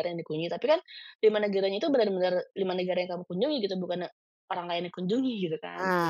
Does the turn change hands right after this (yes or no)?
yes